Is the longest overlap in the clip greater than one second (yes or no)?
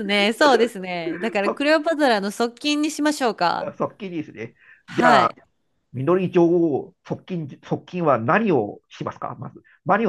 no